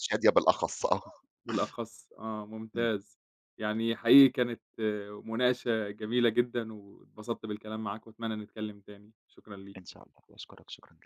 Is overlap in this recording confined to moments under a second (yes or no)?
yes